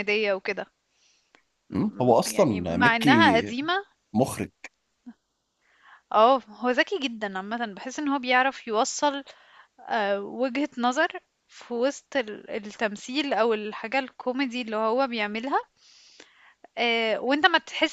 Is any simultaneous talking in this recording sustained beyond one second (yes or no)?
yes